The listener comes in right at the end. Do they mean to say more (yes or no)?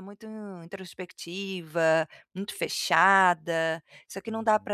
yes